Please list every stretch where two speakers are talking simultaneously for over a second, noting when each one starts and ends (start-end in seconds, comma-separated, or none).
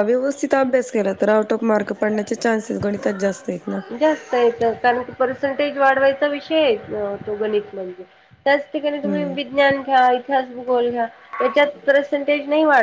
none